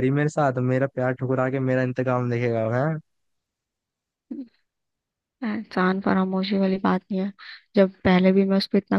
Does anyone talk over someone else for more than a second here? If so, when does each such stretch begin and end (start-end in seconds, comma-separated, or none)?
none